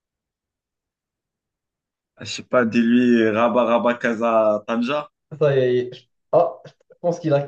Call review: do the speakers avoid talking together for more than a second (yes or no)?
yes